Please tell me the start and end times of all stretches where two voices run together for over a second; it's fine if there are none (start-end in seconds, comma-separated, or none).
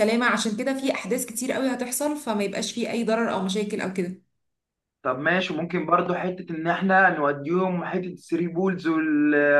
none